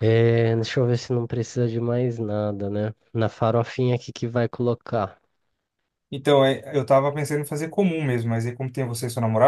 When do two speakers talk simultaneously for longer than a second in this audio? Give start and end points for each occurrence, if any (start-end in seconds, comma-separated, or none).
none